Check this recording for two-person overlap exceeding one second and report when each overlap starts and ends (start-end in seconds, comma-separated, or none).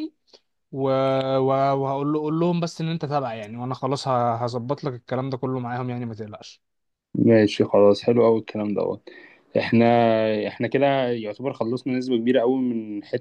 none